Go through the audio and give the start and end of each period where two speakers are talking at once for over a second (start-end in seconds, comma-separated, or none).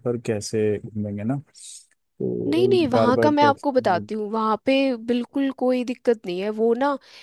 2.5-4.1